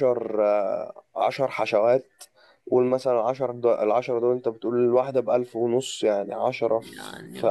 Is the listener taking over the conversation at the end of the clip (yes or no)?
no